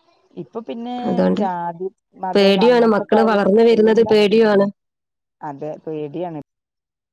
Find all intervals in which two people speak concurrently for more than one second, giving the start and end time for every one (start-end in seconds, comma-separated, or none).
2.3-4.2